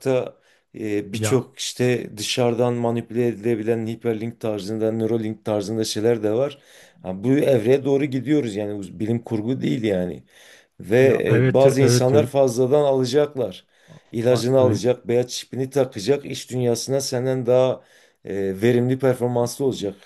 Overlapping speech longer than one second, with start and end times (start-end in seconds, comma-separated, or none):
11.0-12.3